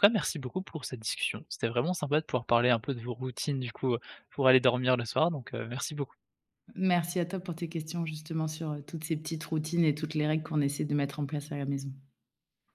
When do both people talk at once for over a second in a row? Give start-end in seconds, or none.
none